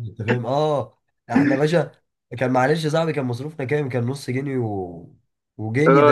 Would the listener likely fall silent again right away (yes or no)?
no